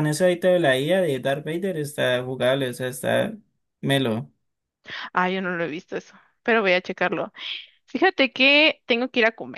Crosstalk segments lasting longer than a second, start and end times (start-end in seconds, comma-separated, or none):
none